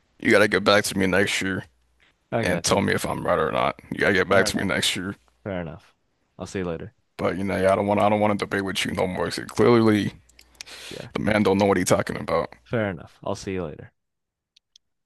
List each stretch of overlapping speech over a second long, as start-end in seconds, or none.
none